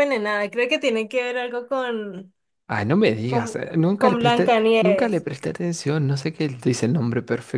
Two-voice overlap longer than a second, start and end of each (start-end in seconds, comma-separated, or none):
3.2-5.2